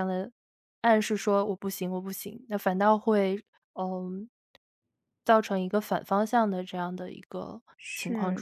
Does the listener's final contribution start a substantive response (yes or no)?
yes